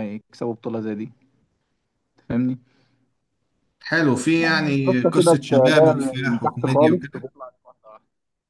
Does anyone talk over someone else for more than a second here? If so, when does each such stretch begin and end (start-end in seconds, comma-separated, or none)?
4.4-7.3